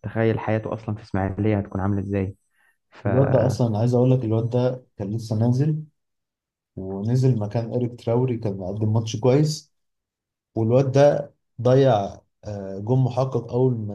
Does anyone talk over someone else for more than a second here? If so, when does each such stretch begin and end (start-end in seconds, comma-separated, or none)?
none